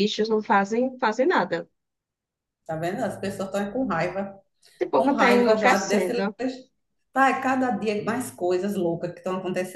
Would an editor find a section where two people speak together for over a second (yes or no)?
yes